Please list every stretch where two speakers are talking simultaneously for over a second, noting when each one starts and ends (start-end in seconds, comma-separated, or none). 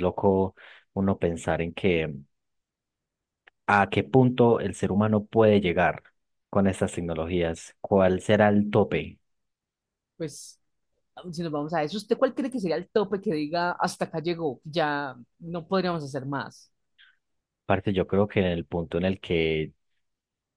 none